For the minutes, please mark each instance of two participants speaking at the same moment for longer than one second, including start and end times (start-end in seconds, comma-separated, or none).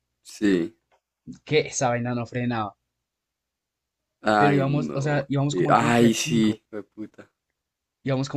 4.4-6.6